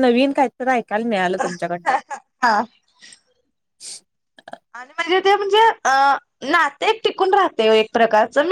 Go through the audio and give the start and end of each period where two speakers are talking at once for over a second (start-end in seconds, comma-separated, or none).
none